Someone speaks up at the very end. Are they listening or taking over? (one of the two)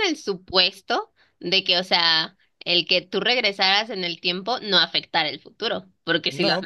taking over